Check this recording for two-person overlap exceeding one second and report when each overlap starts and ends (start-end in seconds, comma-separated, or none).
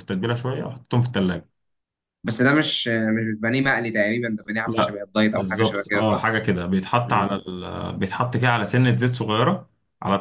4.7-6.3